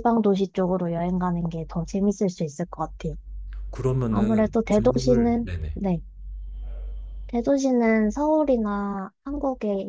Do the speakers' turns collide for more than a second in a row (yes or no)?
yes